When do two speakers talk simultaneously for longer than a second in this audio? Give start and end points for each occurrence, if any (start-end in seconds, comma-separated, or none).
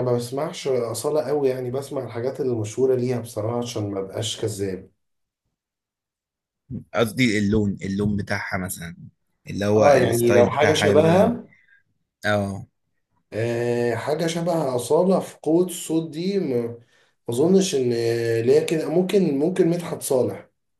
9.8-11.3